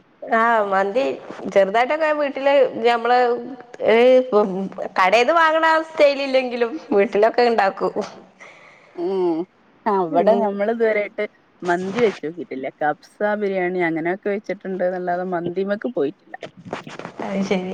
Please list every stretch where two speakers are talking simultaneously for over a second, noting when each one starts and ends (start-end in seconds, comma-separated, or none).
none